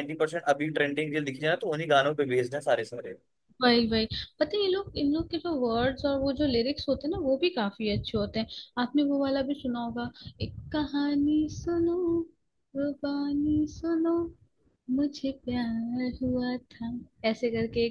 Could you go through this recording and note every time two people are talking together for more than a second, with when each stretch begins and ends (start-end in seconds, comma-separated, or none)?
none